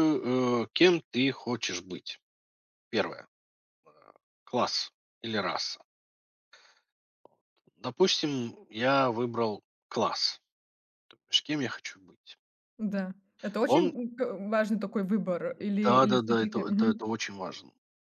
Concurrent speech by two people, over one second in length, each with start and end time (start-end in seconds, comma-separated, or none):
15.8-17.1